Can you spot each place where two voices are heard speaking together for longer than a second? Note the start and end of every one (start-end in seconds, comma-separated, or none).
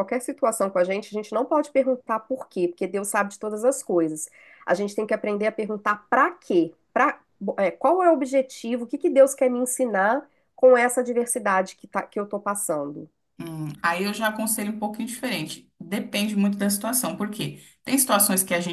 none